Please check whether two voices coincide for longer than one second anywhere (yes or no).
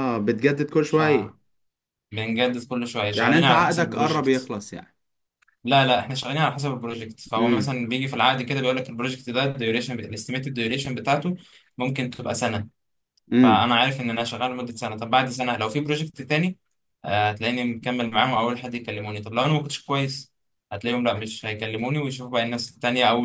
yes